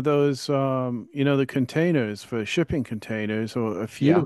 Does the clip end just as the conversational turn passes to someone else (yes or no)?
no